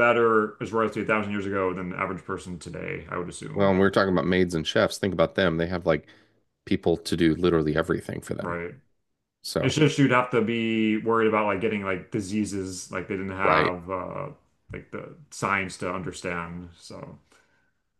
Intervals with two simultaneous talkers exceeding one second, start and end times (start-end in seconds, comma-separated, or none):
none